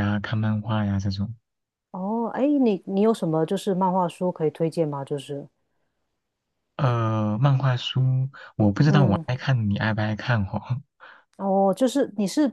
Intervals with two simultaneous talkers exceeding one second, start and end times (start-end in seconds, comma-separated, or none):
none